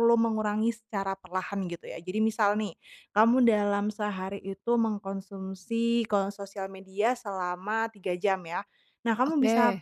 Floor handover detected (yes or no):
no